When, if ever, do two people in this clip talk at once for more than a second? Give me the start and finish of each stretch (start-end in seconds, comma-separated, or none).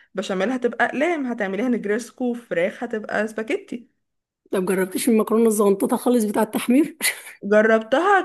none